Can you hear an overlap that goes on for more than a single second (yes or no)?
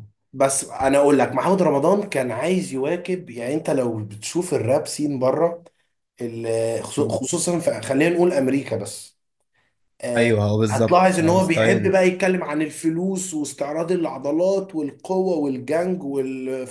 yes